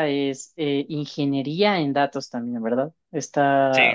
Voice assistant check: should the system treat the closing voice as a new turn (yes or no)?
no